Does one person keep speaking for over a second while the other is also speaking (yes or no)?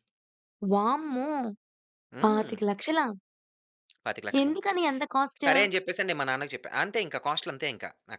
no